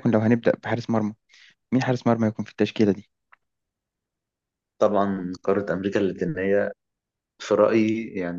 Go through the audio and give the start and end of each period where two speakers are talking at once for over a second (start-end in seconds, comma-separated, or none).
none